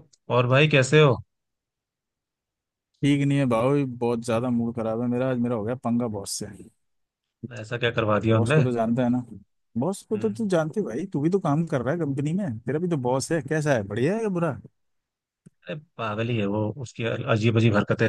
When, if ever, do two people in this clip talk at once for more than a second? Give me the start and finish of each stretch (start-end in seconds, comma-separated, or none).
none